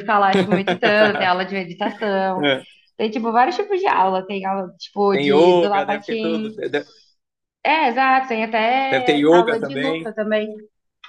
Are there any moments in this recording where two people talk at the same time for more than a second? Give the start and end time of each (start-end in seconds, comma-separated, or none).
5.1-6.5, 8.9-10.1